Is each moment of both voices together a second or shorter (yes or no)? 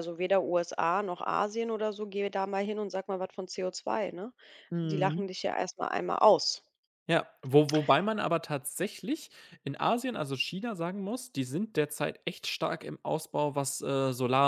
yes